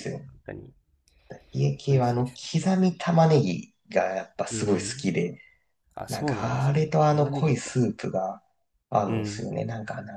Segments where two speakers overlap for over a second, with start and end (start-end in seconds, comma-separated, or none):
6.1-7.7